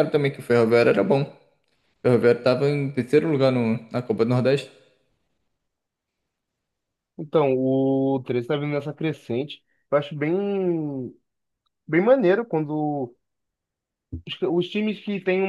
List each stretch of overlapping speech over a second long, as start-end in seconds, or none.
none